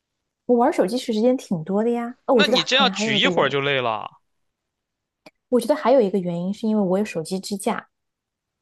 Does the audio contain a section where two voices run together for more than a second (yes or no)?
yes